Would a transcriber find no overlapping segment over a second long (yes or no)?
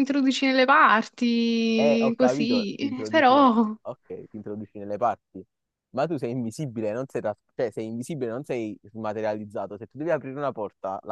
no